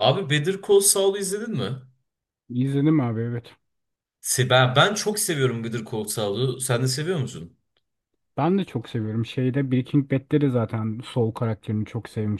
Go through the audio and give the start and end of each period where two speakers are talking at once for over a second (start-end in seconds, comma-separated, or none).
none